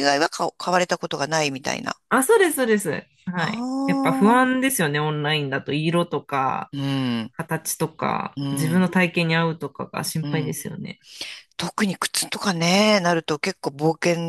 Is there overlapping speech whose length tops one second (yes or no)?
yes